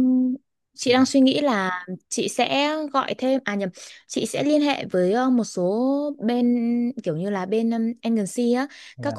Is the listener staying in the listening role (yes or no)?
yes